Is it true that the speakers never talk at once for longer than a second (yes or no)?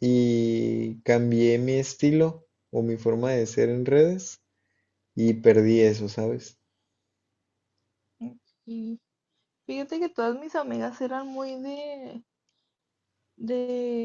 yes